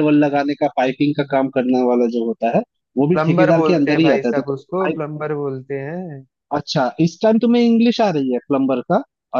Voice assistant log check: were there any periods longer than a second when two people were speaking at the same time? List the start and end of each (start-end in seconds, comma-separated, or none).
3.1-5.0